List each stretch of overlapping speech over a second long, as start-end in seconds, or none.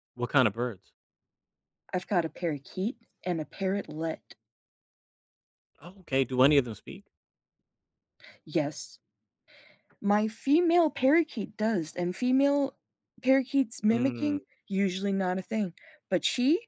none